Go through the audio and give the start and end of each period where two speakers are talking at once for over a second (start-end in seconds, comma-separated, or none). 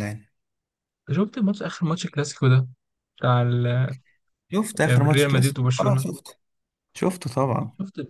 4.8-6.1